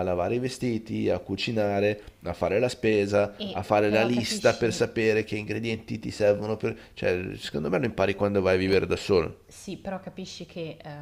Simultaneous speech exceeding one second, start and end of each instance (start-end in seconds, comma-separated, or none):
3.4-4.8